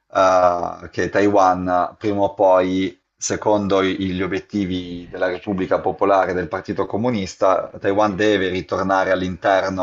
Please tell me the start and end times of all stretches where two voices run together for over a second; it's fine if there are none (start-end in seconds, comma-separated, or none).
7.6-9.0